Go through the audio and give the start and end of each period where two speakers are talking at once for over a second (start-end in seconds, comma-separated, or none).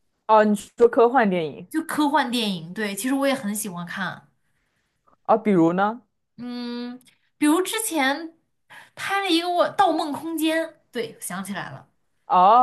none